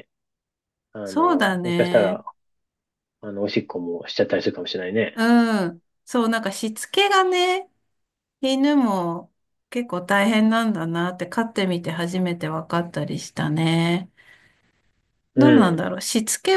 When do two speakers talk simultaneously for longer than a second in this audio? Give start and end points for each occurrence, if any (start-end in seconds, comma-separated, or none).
1.0-2.2